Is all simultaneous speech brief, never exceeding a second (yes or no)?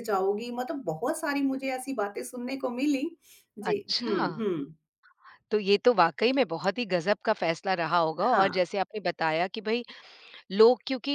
yes